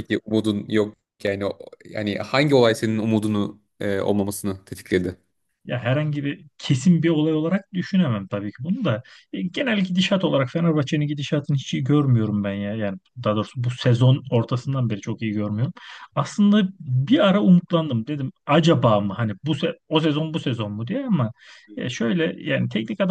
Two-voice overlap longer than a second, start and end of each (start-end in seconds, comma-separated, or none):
none